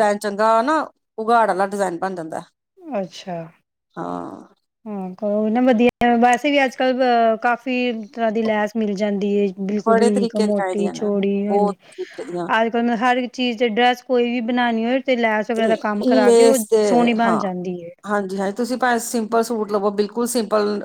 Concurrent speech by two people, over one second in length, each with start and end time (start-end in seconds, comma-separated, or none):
9.9-11.7